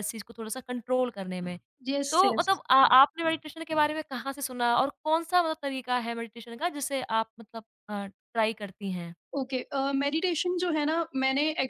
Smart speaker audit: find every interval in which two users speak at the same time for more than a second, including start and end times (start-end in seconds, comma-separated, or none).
none